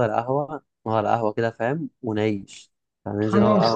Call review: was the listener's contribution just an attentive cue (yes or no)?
no